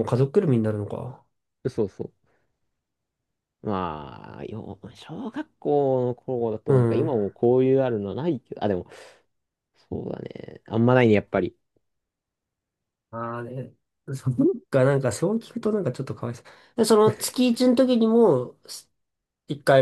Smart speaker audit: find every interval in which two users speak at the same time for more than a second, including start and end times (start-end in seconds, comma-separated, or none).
none